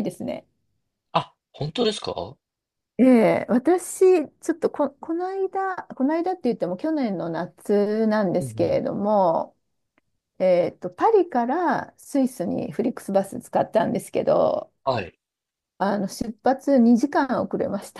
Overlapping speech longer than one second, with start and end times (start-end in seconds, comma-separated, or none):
none